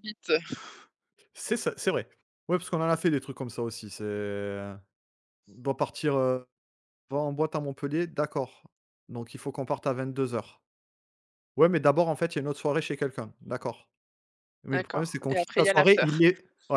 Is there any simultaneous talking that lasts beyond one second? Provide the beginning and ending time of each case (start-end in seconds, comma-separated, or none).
14.7-16.1